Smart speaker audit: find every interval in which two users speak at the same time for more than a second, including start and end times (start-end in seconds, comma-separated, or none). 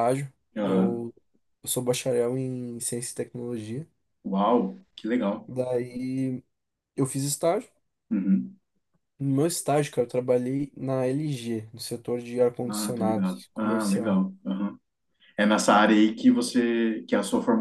12.7-14.3